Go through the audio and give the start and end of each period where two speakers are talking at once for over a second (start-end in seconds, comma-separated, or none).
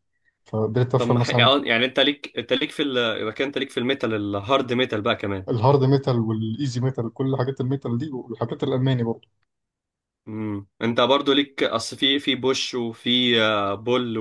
none